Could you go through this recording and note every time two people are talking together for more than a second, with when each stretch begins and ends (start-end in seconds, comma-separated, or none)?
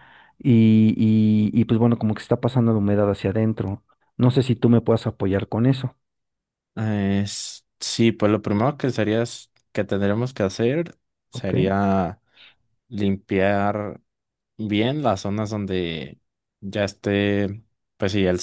none